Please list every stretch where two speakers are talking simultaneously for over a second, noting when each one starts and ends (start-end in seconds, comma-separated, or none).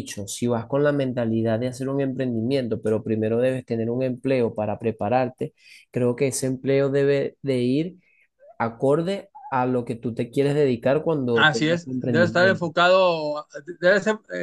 11.3-12.7